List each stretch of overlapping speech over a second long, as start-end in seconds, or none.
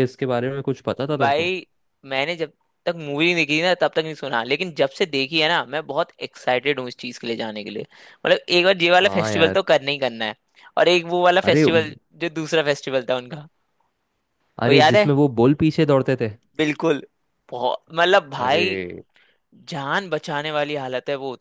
none